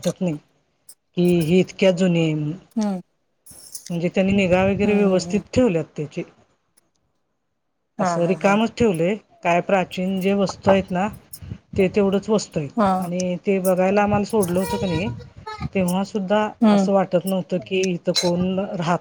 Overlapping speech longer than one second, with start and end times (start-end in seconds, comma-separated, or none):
none